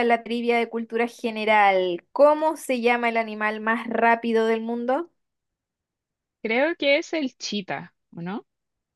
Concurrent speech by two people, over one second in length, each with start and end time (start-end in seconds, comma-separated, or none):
none